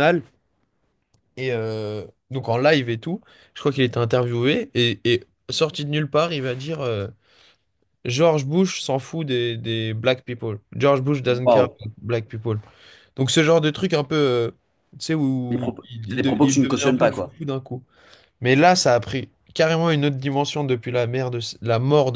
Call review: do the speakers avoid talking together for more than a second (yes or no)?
no